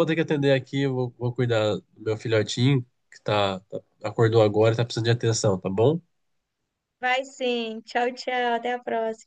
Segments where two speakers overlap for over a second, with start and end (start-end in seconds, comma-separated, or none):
none